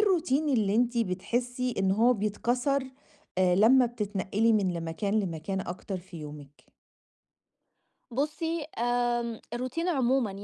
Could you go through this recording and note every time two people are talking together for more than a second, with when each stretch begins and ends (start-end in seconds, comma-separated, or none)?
none